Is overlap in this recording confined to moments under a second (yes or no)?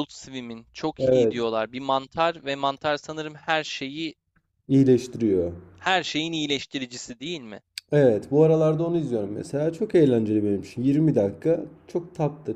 yes